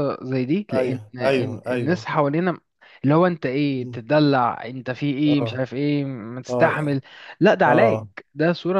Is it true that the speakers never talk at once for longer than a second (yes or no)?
no